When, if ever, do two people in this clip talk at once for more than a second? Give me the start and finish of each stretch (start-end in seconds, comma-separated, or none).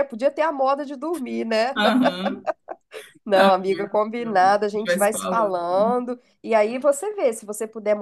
3.3-5.6